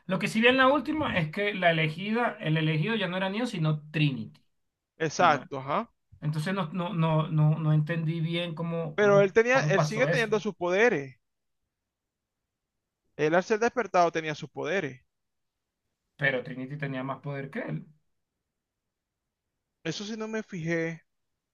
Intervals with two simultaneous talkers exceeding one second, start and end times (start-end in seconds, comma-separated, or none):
9.0-10.4